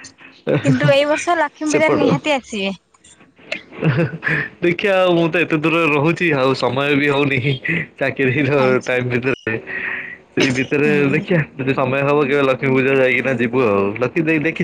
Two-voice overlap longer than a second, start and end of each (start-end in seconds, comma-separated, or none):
none